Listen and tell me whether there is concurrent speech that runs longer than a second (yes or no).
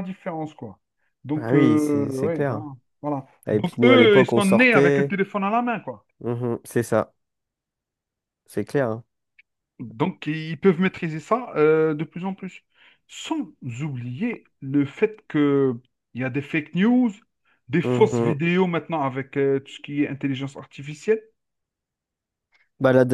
yes